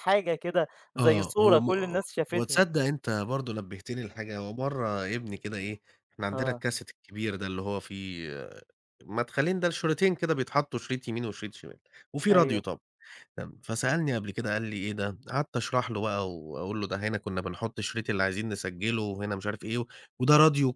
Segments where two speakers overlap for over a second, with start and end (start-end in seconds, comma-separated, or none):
1.0-2.6